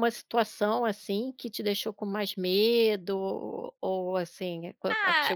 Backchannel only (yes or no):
no